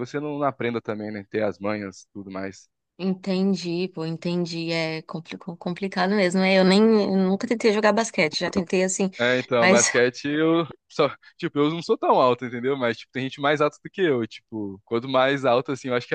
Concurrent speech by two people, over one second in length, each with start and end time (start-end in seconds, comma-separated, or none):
none